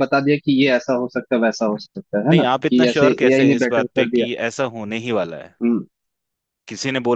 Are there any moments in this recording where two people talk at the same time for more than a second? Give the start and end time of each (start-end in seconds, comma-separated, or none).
2.3-4.3